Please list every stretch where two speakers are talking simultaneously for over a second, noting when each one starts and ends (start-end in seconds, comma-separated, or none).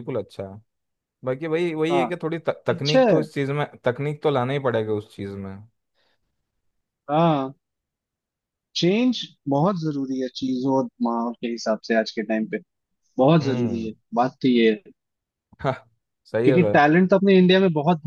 none